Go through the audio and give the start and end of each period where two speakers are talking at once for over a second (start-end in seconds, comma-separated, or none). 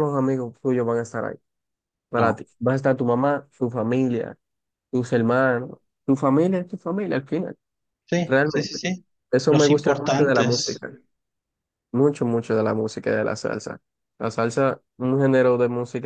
9.5-10.8